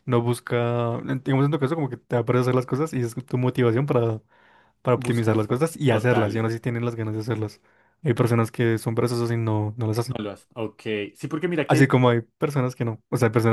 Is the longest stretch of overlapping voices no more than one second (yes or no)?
no